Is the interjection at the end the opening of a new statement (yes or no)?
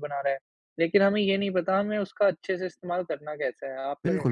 yes